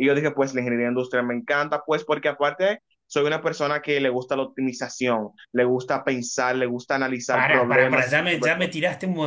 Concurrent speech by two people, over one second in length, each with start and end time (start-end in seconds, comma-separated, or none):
7.3-8.8